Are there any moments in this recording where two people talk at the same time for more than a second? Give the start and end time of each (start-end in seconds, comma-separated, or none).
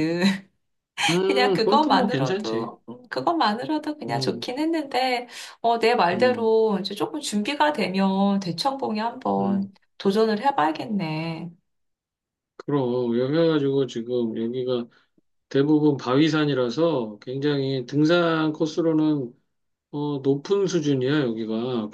1.3-2.7